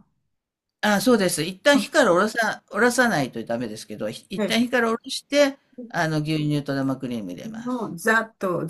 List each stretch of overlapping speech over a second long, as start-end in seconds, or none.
none